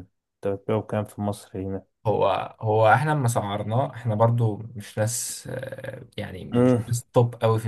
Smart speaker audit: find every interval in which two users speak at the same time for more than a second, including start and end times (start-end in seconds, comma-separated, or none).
none